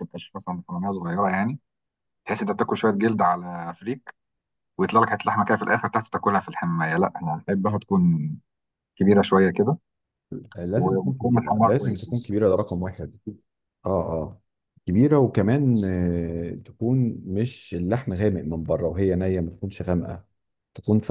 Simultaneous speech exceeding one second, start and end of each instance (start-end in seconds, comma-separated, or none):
10.8-12.1